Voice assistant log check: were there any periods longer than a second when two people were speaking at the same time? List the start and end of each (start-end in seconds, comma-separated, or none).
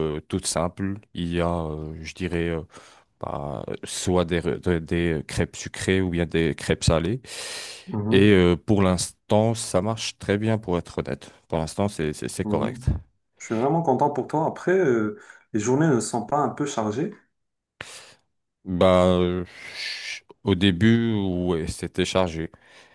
none